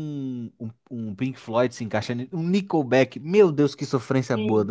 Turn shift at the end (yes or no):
yes